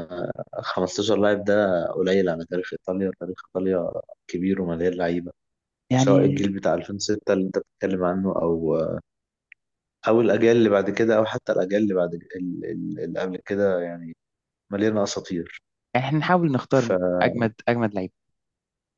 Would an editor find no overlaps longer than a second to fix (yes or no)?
yes